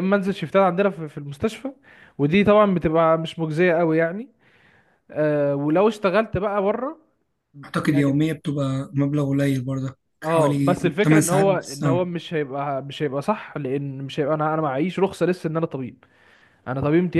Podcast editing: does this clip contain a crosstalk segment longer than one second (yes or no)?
yes